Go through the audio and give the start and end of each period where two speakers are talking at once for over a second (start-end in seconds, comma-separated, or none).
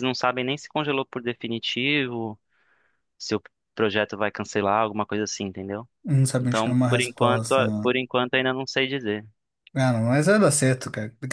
6.4-7.9